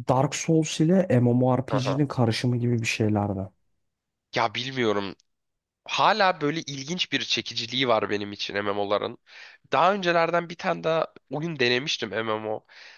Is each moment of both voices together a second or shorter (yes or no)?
yes